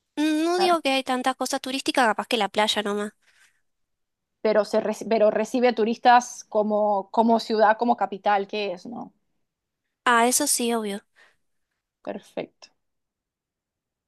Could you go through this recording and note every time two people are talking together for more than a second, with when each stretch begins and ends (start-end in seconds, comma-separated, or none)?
none